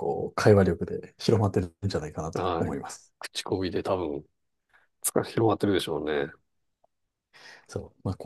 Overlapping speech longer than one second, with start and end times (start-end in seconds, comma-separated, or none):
none